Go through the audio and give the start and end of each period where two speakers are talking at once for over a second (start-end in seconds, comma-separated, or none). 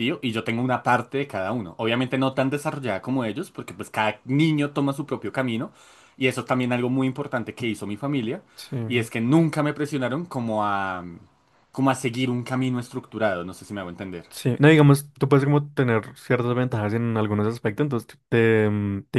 none